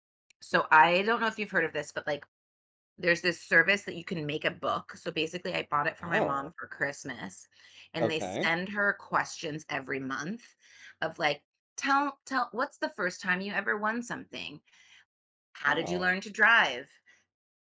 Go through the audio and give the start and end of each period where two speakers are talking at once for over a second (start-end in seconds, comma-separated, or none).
none